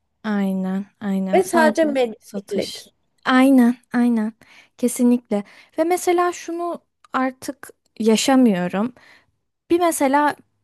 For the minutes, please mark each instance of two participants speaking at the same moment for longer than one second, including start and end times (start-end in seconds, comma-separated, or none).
1.3-2.8